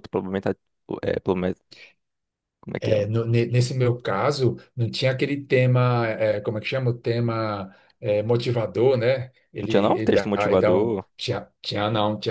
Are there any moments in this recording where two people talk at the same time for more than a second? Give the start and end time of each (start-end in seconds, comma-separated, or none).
9.6-11.0